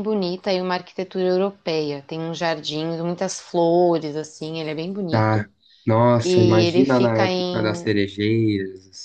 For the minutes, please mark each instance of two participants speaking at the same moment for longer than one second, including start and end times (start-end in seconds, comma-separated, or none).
6.2-7.8